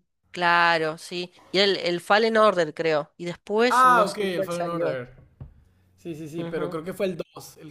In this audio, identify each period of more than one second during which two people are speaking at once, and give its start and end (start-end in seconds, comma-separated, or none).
3.7-5.0